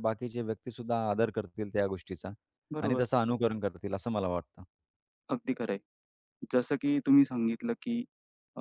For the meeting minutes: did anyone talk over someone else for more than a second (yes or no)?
no